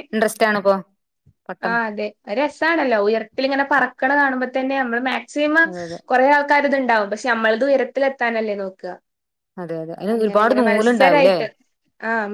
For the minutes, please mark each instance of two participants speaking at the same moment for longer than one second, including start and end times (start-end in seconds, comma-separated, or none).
10.1-11.3